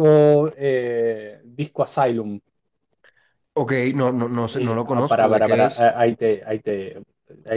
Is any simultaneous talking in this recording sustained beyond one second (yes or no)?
yes